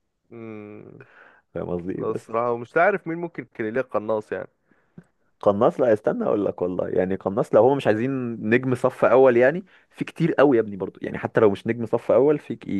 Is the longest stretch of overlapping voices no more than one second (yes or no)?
yes